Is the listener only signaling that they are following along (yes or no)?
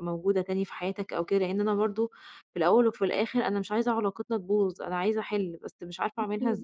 no